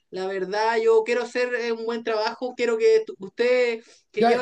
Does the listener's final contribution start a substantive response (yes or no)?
yes